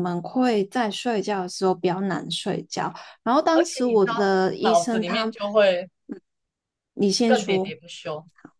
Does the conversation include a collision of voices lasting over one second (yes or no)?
yes